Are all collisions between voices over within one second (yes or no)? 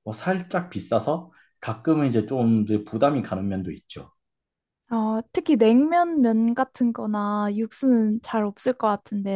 yes